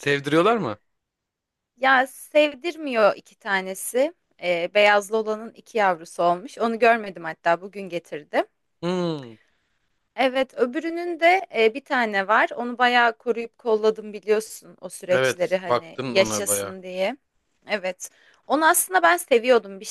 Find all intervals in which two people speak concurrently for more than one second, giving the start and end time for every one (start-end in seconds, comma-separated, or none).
15.1-16.8